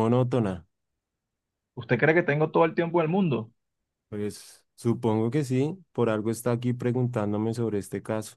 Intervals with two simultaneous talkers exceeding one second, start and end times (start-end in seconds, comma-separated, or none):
none